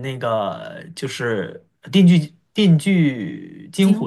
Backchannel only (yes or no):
no